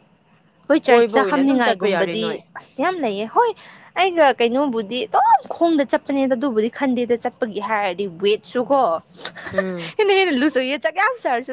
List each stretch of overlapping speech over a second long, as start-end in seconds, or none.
0.8-2.2